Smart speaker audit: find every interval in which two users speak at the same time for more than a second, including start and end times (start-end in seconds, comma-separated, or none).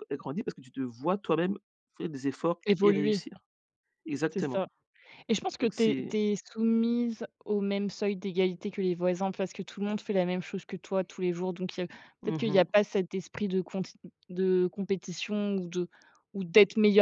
none